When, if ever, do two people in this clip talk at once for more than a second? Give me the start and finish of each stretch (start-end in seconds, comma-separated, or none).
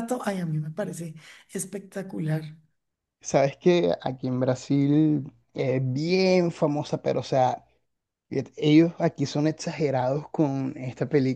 none